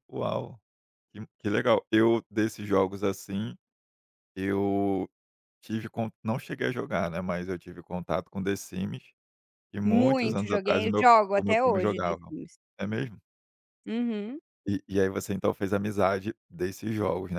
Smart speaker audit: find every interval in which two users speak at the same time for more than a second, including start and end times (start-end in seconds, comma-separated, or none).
9.8-12.2